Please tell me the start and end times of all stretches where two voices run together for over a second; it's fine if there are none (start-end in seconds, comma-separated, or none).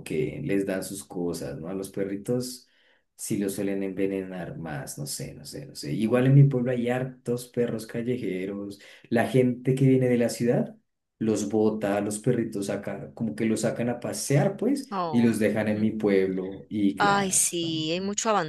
none